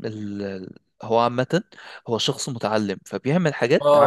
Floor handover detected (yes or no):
yes